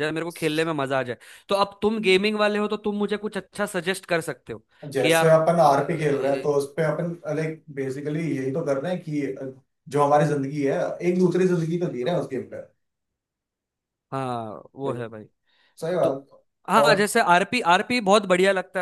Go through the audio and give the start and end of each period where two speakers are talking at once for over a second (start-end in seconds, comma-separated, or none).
5.0-6.7